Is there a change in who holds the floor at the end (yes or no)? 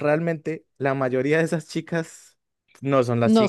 no